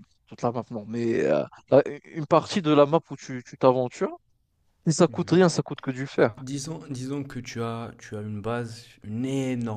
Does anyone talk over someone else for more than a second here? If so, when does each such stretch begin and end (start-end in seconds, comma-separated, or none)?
none